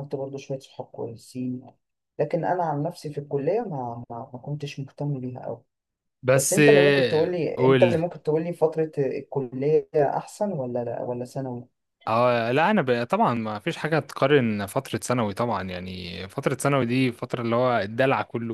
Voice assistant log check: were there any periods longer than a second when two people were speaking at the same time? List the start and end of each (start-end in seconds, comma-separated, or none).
6.3-8.0